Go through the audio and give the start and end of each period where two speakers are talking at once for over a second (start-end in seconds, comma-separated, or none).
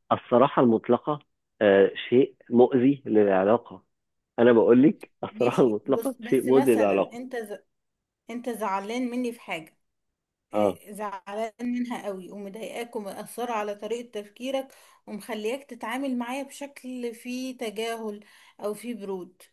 5.3-7.2